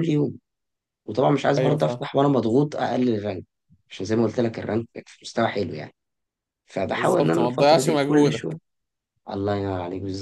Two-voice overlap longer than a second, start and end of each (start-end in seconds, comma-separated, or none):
6.9-8.6